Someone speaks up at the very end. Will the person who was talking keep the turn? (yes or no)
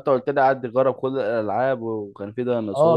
no